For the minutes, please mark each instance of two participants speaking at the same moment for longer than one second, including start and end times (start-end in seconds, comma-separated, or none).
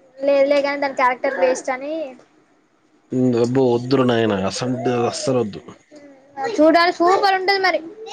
none